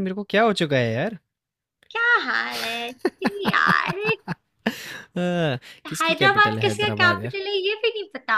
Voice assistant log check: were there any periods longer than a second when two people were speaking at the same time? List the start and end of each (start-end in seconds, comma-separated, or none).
6.0-7.4